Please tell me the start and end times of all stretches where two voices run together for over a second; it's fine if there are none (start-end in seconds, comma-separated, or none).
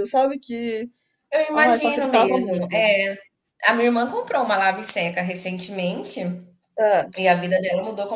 1.5-2.8